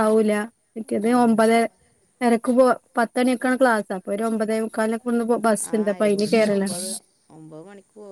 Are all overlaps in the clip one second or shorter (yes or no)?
yes